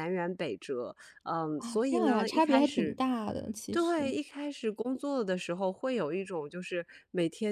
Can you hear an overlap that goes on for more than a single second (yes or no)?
yes